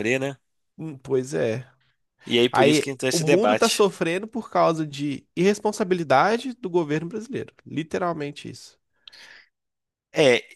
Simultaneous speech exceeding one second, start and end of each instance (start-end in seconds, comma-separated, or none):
2.5-3.9